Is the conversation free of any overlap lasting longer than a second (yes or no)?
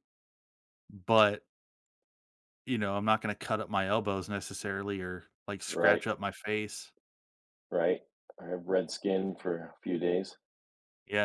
yes